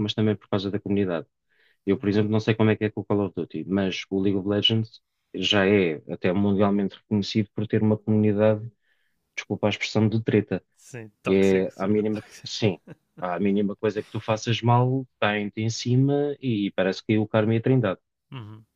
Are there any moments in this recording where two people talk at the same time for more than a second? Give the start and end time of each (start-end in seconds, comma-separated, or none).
11.2-12.7